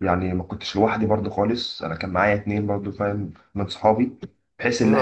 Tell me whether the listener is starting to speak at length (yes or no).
yes